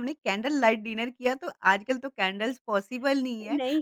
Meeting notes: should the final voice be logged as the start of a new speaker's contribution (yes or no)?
no